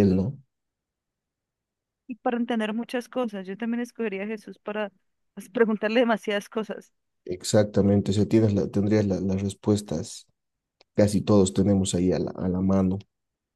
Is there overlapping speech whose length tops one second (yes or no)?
no